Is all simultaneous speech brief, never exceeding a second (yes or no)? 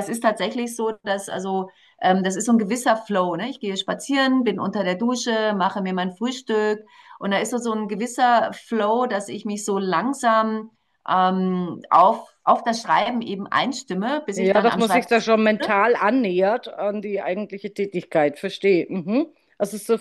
no